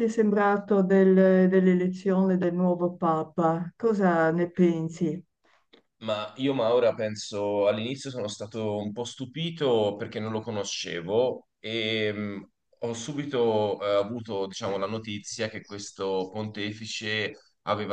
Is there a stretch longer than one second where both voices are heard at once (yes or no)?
no